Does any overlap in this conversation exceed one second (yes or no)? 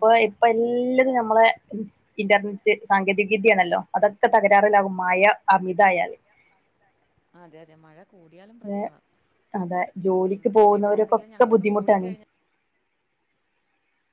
yes